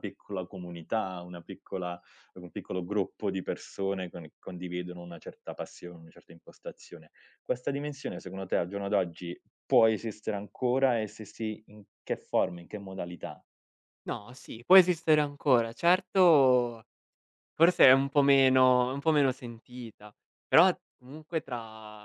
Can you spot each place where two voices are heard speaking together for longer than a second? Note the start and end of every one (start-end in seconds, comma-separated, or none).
none